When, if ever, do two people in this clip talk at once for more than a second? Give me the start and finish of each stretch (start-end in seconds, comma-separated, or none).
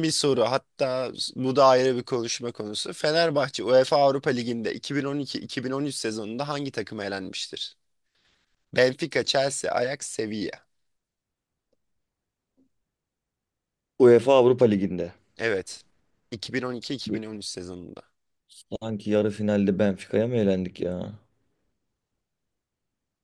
none